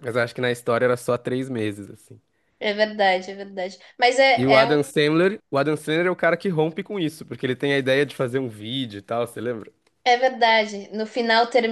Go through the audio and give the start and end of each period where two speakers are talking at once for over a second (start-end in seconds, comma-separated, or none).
none